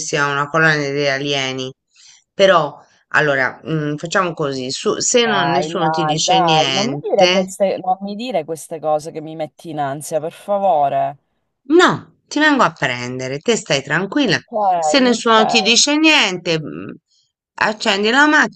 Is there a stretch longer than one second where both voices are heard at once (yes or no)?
yes